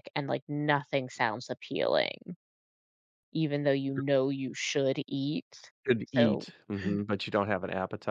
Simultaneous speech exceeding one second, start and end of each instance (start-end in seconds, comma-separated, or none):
none